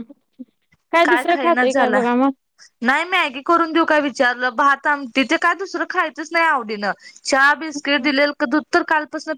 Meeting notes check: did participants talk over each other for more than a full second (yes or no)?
no